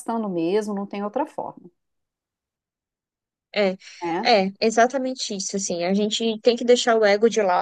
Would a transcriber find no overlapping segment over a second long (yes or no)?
yes